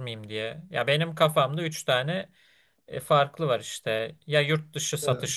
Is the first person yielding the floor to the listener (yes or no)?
no